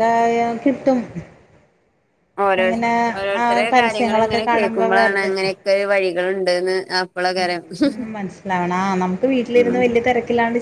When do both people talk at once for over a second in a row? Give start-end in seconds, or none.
3.4-5.4